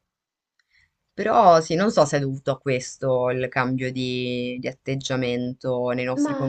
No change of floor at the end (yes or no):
no